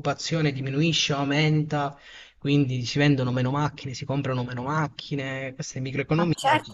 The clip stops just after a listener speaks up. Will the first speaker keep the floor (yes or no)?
no